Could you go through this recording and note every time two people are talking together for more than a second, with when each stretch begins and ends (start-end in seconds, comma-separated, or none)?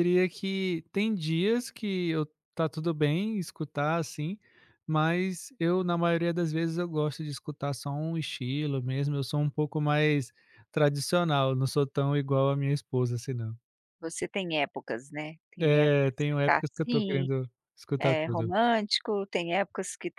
15.6-17.3